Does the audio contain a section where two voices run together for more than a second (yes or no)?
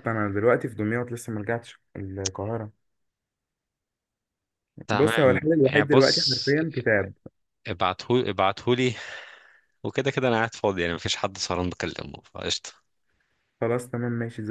yes